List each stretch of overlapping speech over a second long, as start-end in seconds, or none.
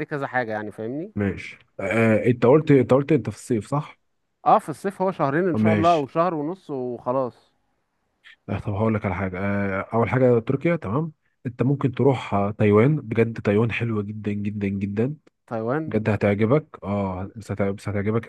none